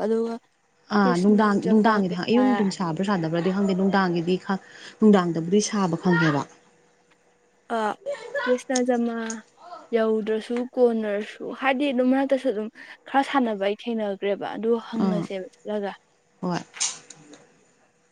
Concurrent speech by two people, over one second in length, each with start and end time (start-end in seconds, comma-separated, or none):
1.0-2.5